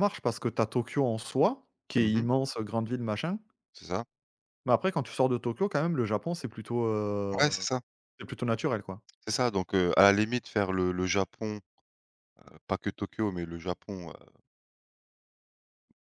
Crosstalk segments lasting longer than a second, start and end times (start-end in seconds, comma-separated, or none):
none